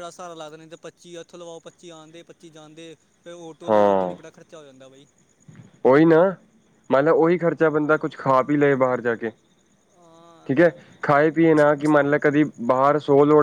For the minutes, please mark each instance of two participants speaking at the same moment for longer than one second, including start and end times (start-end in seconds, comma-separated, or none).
none